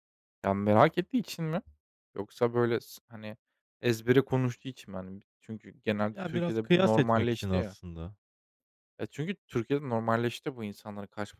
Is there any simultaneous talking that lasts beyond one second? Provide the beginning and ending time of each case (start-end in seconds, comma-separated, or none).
6.1-7.8